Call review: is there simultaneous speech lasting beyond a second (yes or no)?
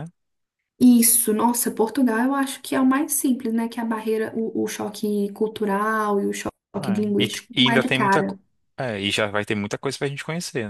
yes